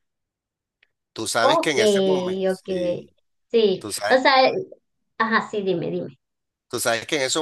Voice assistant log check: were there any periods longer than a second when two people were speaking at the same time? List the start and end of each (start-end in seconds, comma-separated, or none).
none